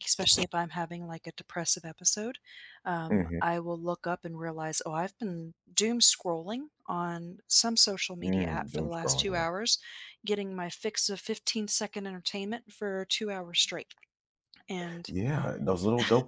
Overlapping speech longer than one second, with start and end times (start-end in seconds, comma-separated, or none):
8.2-9.5